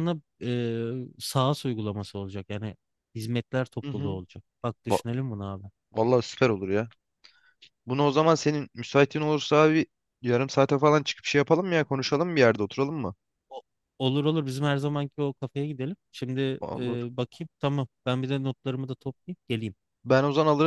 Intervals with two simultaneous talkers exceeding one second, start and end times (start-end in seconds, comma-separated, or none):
none